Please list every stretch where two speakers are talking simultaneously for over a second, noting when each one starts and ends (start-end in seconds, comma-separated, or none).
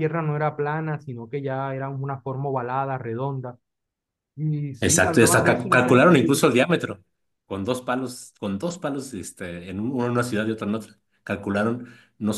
4.8-6.2